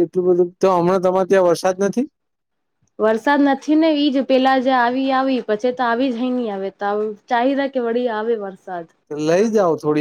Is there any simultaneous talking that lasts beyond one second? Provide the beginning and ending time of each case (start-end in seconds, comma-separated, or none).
none